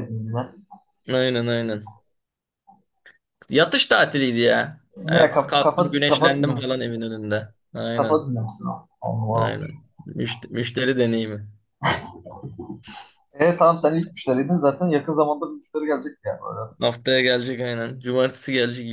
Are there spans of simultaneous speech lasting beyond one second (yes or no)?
yes